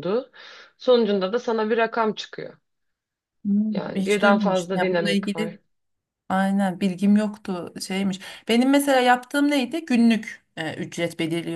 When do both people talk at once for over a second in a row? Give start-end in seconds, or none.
3.7-5.5